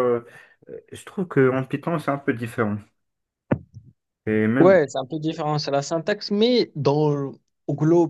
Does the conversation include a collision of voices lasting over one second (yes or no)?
no